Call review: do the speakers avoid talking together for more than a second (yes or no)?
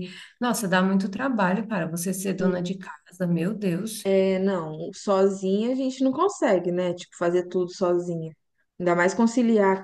yes